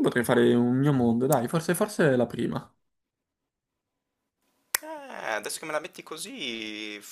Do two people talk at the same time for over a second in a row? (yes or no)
no